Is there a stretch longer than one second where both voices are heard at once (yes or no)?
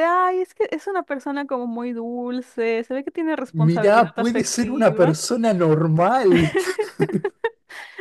yes